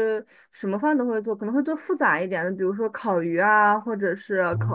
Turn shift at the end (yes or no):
no